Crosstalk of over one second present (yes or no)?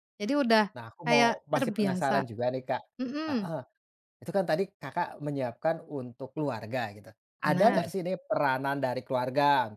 yes